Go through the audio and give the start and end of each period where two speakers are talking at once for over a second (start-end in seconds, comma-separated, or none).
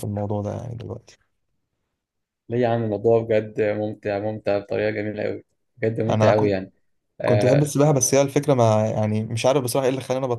none